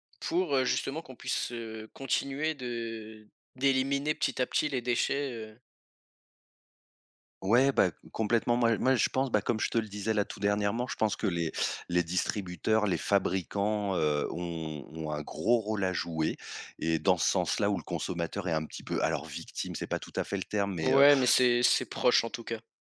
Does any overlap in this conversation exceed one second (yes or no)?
no